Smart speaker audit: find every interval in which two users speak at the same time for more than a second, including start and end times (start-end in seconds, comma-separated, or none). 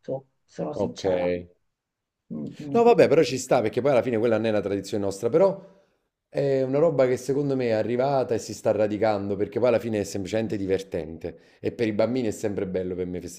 none